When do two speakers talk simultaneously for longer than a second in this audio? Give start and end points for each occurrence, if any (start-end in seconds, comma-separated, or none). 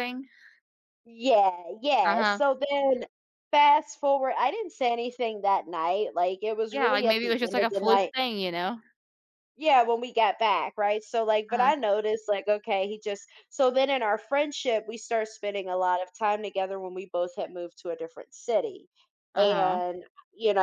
6.7-8.1